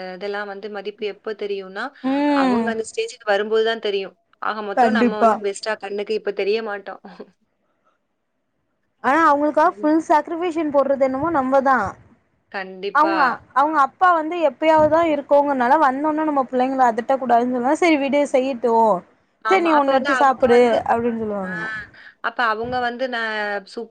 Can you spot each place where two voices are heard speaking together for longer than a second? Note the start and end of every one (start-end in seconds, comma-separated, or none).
none